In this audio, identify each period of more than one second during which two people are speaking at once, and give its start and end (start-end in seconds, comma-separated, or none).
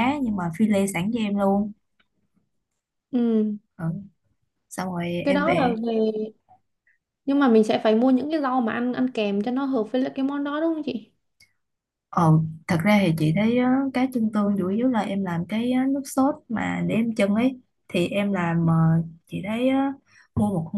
none